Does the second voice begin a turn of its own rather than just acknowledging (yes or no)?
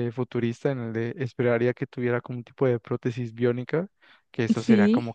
no